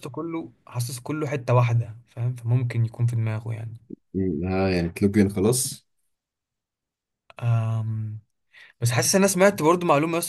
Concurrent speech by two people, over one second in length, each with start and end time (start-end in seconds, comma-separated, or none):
none